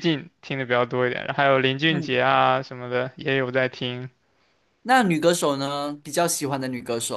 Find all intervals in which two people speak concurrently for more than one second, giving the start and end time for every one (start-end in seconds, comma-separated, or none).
none